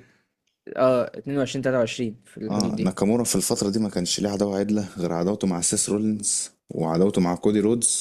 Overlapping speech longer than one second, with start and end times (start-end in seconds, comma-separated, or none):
none